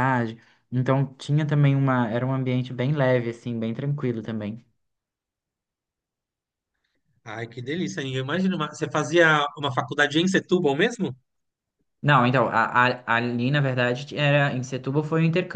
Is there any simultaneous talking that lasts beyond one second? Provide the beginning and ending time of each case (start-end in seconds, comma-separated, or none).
none